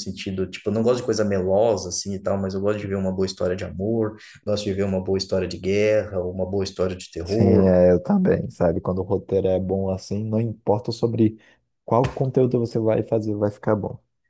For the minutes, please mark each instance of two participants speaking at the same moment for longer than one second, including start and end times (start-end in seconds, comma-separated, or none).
none